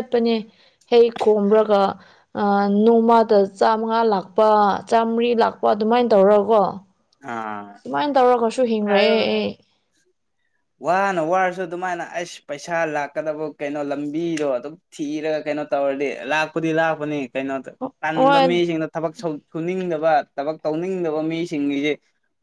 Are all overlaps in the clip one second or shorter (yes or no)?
yes